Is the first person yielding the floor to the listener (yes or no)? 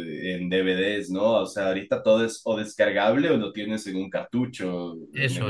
yes